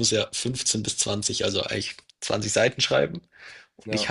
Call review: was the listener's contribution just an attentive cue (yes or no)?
yes